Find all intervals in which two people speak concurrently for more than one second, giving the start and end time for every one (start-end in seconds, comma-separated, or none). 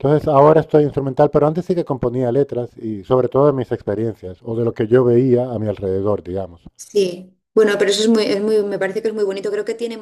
none